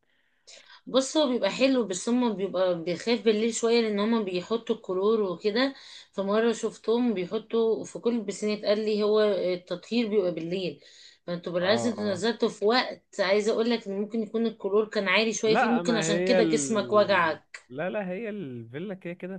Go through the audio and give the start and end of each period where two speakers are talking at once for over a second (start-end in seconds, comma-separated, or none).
15.4-17.6